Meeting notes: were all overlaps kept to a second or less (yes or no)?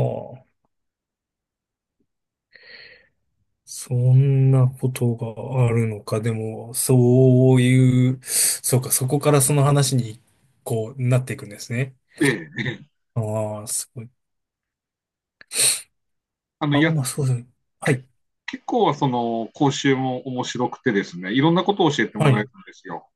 yes